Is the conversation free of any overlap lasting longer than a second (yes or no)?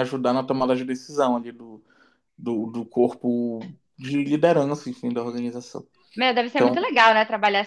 yes